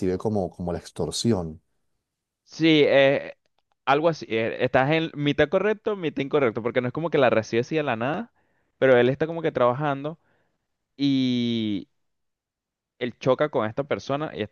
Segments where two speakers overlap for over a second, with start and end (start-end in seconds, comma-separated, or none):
none